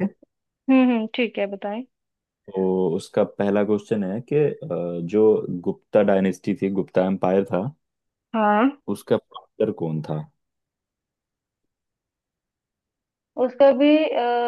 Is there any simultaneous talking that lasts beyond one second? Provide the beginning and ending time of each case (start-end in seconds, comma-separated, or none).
none